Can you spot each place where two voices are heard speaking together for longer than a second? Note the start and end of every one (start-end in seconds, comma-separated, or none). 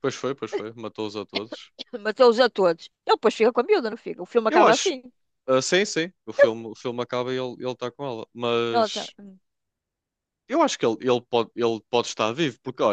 none